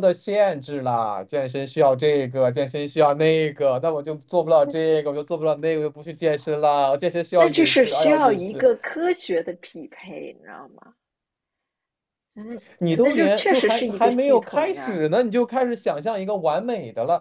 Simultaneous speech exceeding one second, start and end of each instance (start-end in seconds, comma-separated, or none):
7.4-8.7, 13.0-15.0